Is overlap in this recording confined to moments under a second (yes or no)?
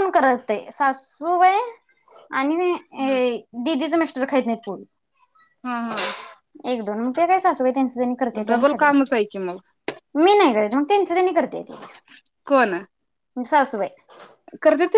yes